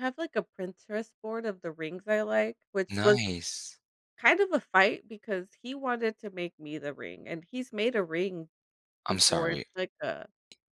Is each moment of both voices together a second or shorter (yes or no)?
yes